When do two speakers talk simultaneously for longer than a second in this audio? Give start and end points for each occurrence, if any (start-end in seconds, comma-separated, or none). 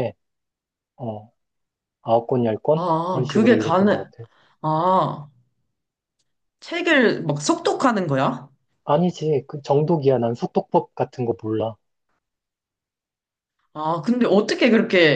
2.7-4.0